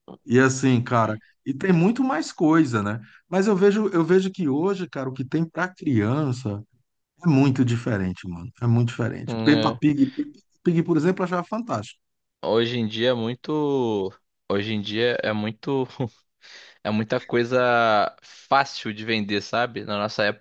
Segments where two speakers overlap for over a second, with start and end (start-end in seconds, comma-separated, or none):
none